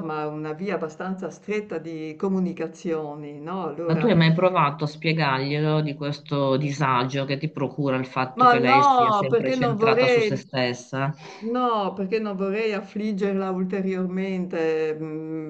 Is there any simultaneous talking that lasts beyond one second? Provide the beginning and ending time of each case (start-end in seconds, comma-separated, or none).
8.3-10.4